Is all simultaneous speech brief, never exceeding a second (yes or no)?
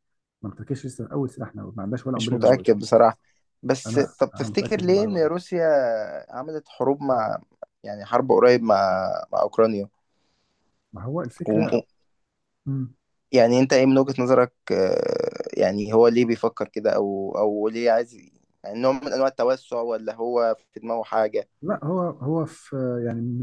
no